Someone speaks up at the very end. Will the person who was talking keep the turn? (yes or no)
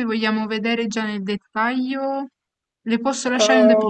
no